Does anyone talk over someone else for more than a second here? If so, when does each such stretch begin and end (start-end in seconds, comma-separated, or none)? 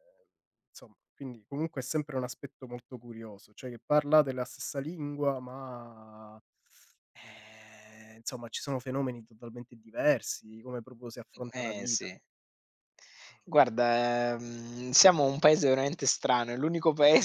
none